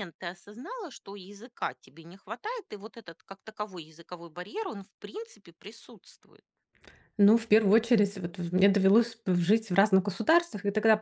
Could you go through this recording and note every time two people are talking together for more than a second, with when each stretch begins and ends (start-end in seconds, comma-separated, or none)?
none